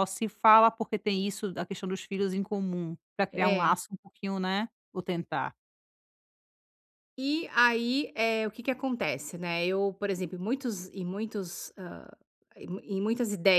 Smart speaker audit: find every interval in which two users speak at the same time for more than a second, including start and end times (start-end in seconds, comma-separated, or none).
none